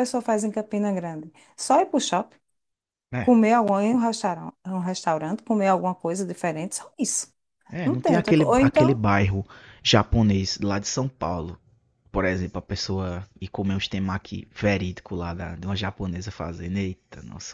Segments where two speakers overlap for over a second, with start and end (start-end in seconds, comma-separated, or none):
7.8-9.0